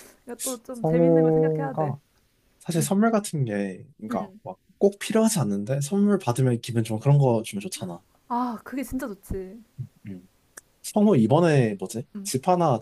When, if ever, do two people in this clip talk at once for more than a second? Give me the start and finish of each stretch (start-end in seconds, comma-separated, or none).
0.7-1.9